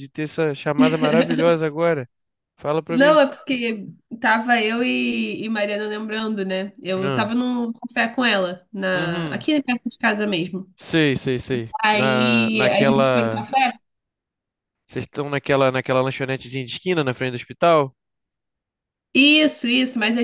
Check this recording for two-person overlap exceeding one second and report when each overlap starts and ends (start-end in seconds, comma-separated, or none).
11.8-13.5